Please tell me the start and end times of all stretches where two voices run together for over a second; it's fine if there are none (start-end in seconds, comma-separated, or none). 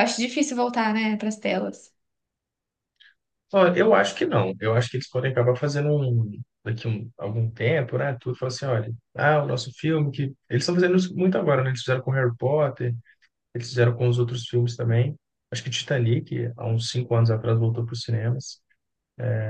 none